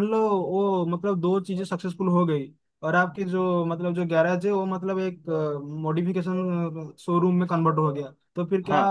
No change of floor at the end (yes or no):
yes